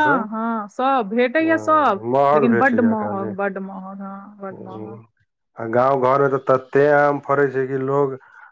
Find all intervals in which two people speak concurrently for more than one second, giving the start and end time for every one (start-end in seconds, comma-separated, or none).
1.4-3.3